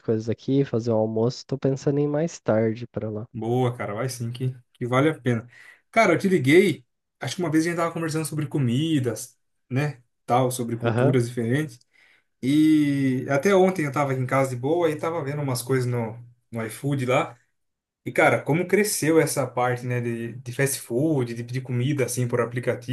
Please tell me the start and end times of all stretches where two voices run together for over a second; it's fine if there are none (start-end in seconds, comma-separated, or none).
none